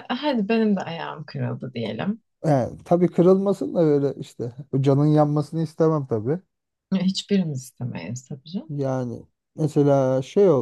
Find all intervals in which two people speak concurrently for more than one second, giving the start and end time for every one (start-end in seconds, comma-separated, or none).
none